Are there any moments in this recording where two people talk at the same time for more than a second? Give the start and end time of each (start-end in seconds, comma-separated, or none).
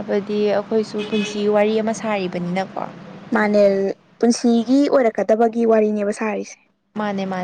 none